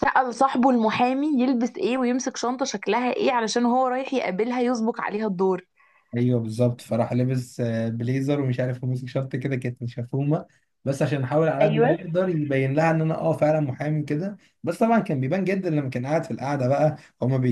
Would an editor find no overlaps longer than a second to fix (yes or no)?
yes